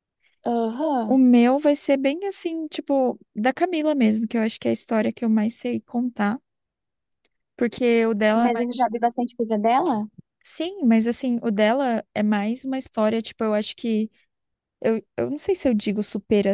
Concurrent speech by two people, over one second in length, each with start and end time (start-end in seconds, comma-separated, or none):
none